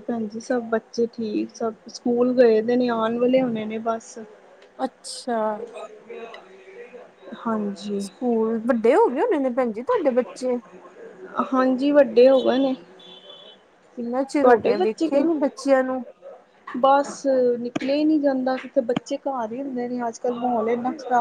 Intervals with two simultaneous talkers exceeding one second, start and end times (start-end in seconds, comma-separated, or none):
none